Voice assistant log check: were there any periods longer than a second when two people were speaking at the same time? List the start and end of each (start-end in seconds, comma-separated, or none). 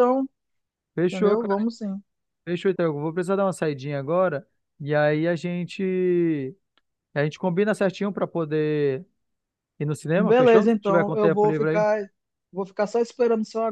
10.1-11.8